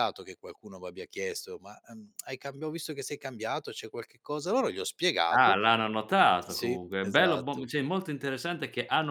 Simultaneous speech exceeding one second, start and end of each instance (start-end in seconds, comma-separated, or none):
6.4-7.7